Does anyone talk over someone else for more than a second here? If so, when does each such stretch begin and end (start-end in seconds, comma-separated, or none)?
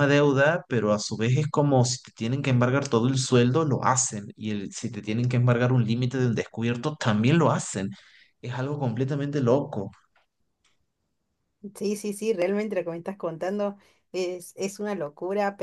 none